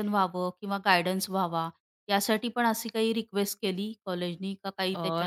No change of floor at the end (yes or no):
no